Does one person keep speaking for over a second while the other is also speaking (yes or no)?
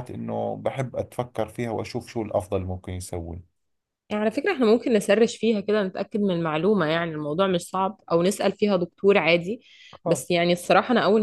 no